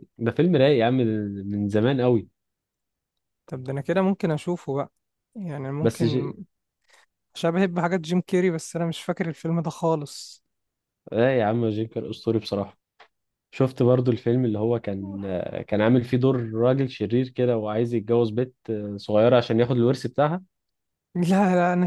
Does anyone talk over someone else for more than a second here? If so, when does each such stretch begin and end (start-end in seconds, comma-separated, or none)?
none